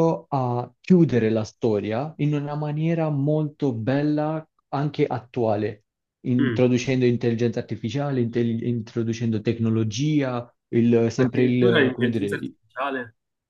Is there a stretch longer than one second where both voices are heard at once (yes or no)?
yes